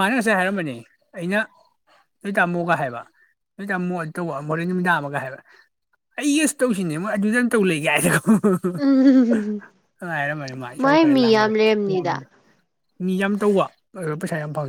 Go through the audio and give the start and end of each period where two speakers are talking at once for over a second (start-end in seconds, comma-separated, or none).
10.8-12.2